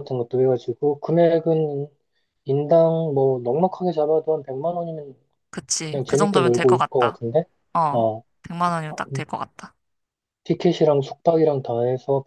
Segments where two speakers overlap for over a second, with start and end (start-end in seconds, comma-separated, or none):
5.8-7.2